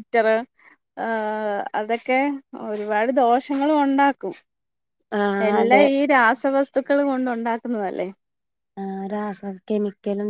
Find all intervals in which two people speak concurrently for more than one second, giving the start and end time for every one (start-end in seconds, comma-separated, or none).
none